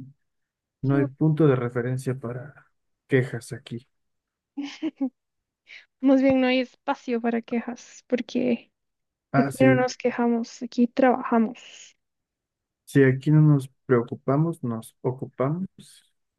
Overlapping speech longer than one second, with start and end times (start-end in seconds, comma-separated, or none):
none